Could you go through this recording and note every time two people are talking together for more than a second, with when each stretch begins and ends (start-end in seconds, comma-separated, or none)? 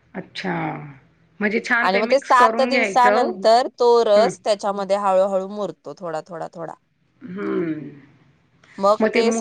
1.9-3.3